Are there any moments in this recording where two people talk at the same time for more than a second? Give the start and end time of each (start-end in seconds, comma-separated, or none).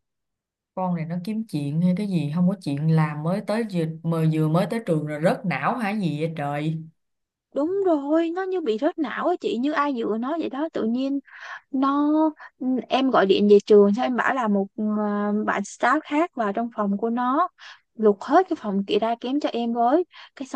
none